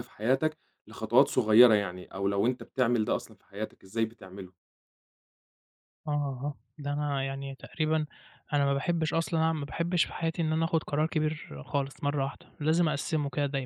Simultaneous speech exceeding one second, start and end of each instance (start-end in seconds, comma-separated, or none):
none